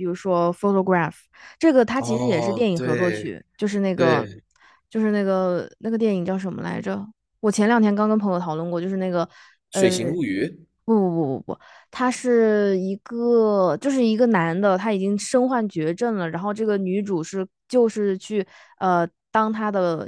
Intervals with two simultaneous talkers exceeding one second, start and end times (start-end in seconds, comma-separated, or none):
2.0-3.3